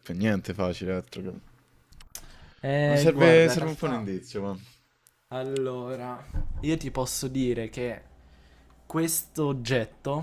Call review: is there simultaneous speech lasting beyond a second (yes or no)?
yes